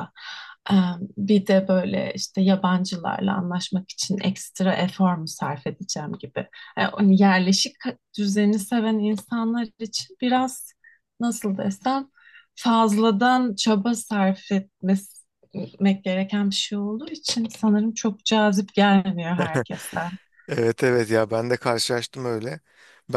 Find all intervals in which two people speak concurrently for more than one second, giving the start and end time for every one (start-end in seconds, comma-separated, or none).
none